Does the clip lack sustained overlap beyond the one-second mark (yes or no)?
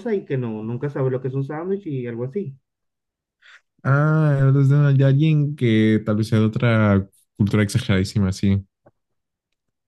yes